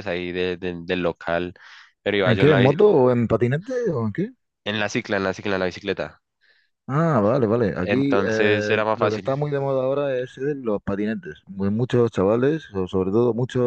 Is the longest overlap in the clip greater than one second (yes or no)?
yes